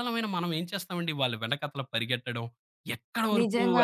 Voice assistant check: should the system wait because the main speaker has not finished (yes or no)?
yes